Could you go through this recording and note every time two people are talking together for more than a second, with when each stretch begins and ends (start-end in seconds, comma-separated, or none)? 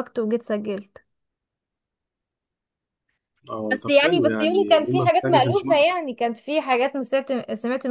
3.7-5.8